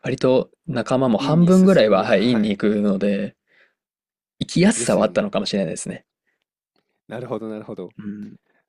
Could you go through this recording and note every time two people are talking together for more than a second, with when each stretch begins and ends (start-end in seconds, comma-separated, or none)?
1.2-2.6